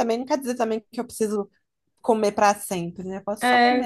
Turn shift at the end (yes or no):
yes